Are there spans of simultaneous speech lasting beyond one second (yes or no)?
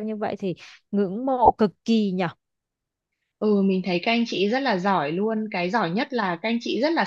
no